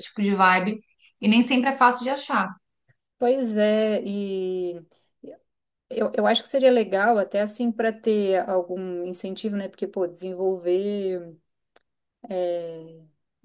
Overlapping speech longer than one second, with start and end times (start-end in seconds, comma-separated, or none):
none